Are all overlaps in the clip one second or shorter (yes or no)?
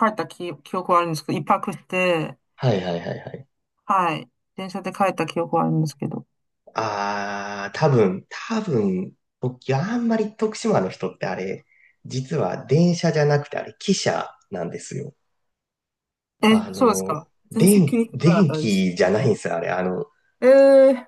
no